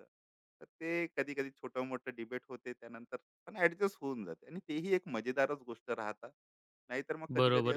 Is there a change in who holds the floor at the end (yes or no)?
yes